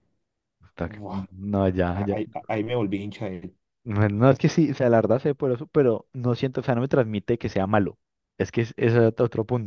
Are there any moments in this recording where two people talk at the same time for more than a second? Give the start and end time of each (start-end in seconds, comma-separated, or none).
none